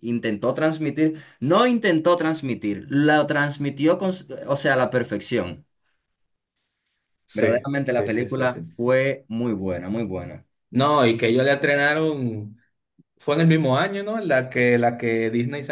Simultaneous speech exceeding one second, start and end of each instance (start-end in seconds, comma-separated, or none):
7.3-8.7